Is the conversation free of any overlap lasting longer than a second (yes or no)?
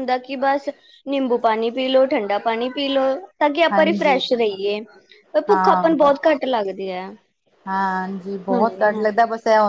yes